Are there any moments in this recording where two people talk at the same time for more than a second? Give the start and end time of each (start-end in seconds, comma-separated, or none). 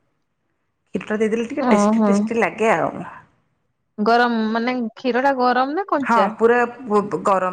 none